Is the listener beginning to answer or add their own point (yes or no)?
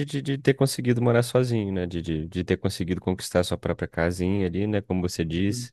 no